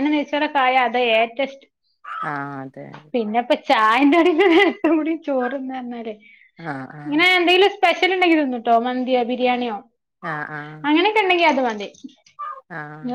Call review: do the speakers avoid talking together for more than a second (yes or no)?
yes